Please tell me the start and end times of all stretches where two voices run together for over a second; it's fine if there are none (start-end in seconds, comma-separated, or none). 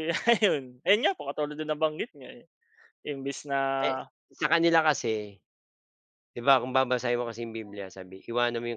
none